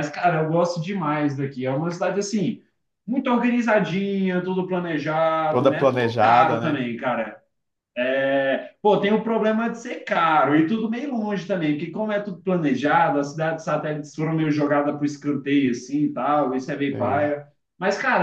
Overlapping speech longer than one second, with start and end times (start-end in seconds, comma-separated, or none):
5.5-6.9